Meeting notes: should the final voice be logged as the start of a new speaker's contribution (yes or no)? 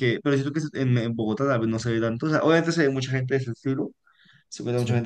no